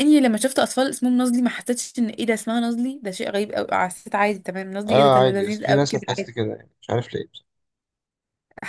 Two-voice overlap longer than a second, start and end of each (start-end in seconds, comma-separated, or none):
4.9-6.3